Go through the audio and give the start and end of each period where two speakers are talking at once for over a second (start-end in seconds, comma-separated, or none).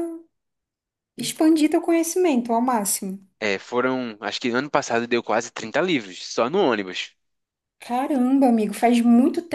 none